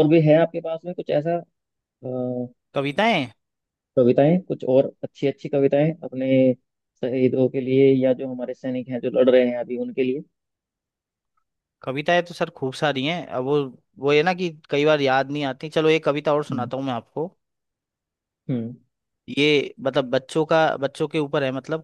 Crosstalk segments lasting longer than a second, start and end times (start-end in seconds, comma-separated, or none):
none